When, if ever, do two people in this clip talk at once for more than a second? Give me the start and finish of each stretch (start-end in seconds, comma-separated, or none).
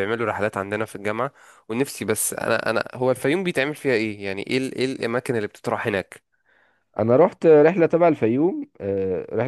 none